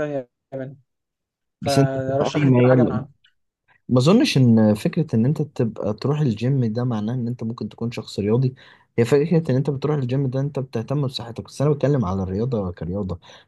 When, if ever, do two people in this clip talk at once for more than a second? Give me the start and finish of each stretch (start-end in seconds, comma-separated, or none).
1.6-3.1